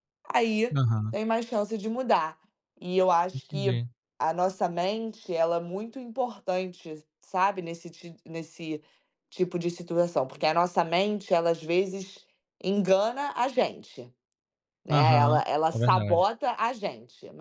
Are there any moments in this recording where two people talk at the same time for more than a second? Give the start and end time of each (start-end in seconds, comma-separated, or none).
14.9-16.3